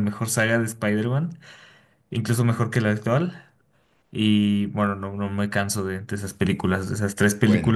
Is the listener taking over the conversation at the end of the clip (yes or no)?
yes